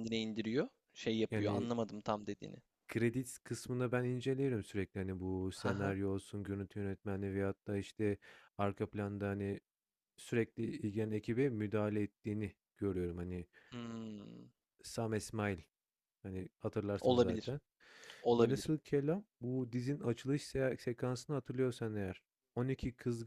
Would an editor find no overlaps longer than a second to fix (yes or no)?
yes